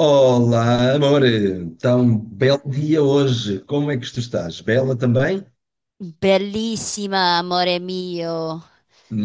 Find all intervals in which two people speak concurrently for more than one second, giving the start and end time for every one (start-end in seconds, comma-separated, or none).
none